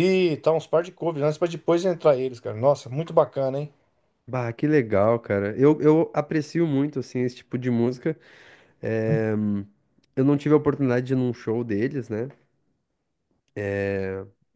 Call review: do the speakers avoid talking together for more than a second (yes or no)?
yes